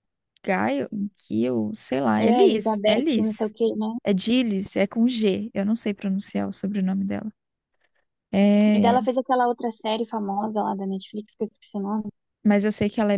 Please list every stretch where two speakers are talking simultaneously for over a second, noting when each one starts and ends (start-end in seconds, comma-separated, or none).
2.2-3.5